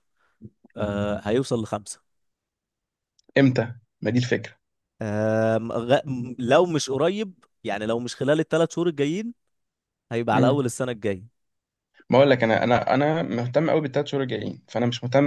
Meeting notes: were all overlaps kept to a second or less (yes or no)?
yes